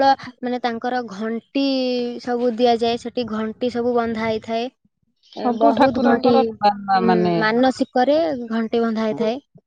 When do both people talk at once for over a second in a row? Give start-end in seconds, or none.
5.4-7.4